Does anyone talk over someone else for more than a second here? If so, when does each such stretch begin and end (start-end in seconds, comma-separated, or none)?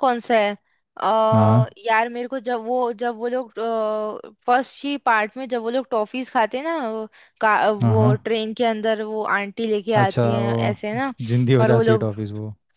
none